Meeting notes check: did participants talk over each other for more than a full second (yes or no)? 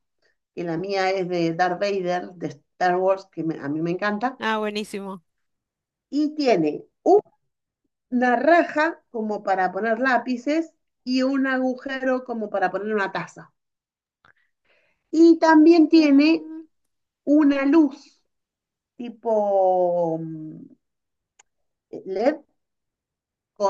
no